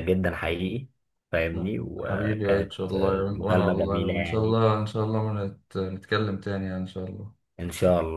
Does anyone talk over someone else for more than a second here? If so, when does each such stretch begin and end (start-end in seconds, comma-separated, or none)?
2.0-4.6